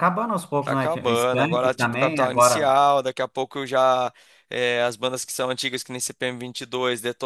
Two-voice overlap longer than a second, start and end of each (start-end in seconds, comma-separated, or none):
0.6-2.7